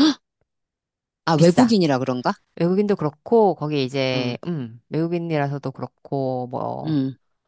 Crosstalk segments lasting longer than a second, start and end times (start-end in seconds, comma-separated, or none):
none